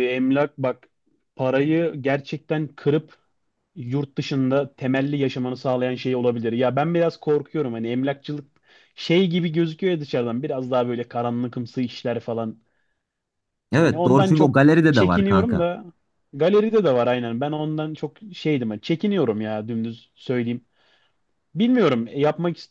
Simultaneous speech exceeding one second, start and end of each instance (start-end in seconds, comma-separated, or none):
13.8-15.7